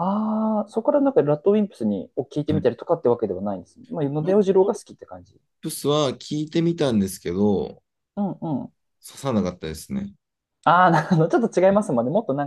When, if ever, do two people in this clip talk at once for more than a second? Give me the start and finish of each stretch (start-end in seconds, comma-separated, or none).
none